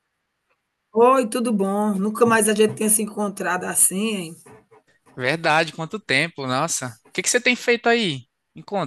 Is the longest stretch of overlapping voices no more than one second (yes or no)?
yes